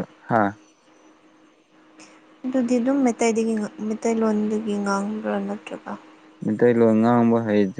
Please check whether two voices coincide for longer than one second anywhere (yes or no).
no